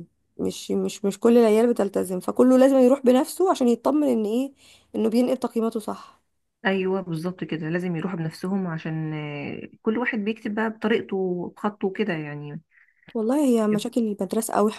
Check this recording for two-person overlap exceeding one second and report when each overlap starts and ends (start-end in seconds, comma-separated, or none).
none